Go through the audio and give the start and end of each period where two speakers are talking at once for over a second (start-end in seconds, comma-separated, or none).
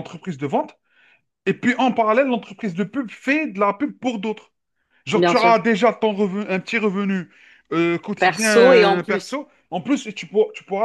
8.2-9.4